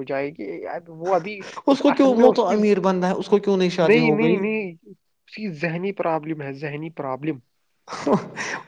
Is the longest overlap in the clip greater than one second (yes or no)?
yes